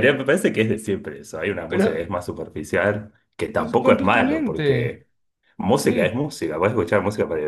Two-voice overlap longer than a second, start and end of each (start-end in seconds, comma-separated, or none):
3.5-5.0